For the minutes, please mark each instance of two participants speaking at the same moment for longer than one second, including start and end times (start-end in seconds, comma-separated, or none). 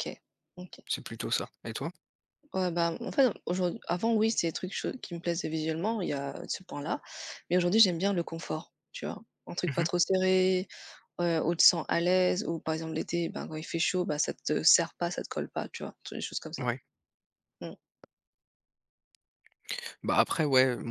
none